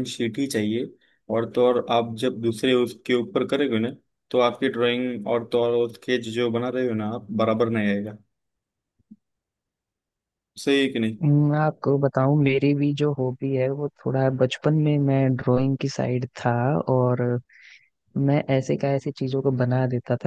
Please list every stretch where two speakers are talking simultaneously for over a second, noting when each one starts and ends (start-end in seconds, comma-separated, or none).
none